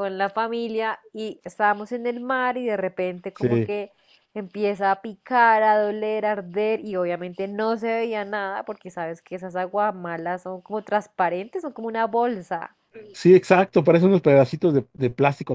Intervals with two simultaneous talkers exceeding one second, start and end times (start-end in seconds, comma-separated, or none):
none